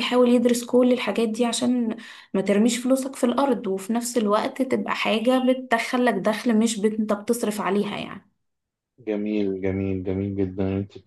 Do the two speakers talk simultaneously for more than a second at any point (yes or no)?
no